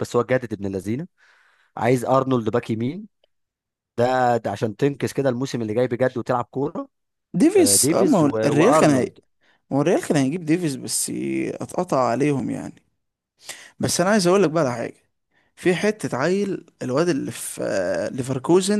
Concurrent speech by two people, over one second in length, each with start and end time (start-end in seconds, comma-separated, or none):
7.6-9.1